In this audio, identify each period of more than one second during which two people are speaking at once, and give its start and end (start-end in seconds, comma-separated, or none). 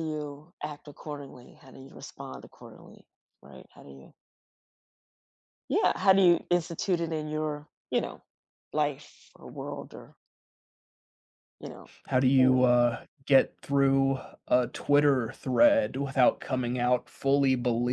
none